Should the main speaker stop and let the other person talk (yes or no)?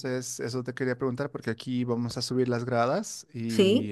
no